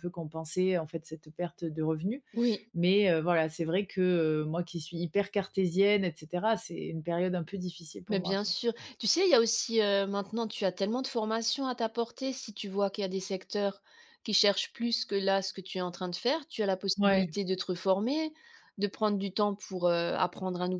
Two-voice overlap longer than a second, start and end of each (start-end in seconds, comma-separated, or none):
none